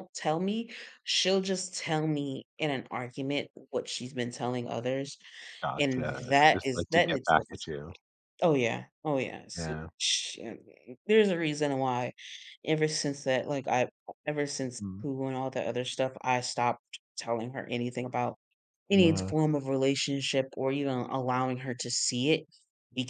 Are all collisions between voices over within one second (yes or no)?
no